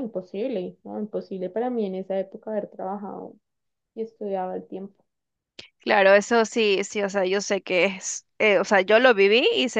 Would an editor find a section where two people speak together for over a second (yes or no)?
no